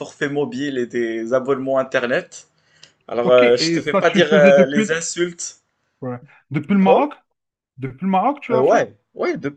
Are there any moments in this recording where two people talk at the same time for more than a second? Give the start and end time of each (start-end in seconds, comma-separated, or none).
3.2-4.9